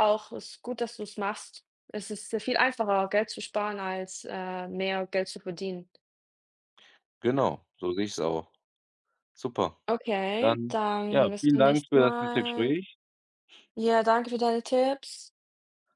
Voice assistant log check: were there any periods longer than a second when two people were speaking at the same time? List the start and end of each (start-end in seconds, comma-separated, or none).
10.4-12.7